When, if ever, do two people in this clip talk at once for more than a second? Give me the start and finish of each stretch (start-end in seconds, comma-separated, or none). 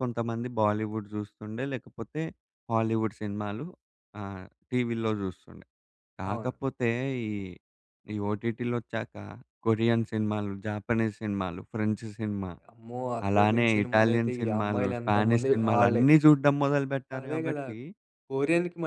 13.3-16.0